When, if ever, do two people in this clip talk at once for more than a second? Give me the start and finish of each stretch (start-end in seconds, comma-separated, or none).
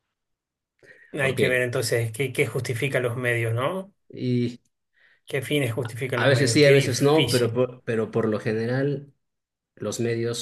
6.1-7.6